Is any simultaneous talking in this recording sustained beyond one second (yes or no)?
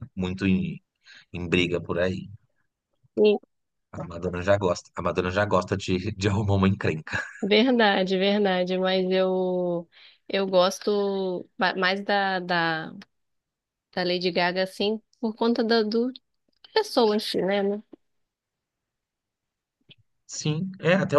no